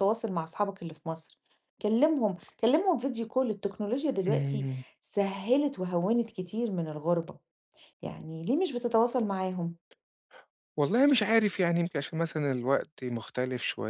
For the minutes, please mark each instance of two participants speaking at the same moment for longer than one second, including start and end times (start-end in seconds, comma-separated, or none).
none